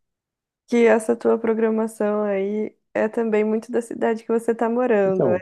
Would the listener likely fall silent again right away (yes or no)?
no